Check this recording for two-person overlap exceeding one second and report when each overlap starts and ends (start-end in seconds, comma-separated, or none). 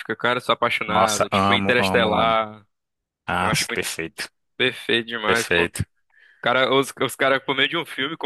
0.9-2.4